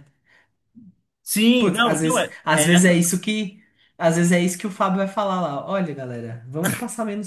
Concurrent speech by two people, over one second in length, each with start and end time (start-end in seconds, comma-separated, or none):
1.6-3.0